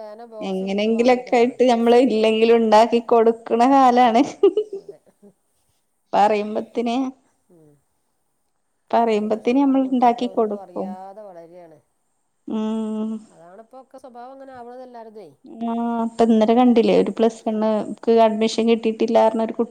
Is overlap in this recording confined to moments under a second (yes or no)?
no